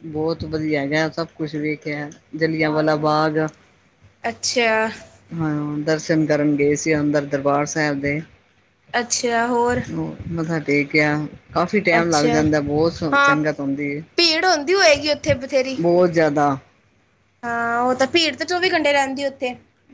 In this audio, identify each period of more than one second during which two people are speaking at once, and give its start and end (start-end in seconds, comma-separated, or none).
none